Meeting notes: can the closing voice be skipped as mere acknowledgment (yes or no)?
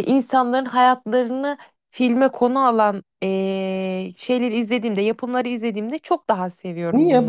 no